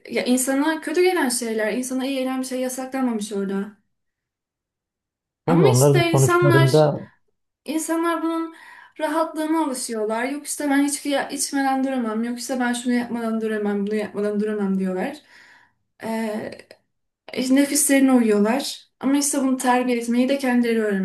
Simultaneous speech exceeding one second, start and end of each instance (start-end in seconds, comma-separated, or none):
5.5-6.8